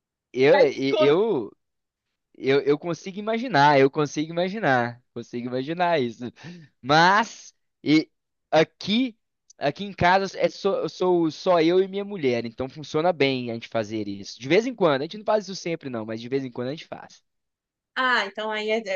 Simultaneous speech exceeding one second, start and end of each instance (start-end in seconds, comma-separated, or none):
none